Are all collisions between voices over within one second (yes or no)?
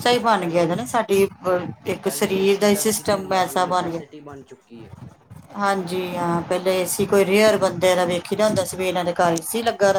no